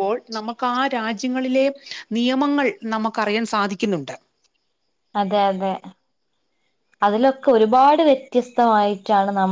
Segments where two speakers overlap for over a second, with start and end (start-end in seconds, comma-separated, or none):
none